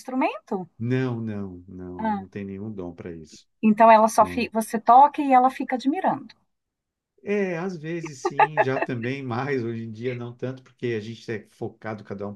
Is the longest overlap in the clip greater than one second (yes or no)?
no